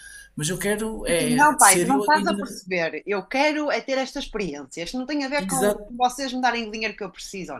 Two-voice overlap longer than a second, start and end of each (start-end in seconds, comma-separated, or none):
1.1-2.5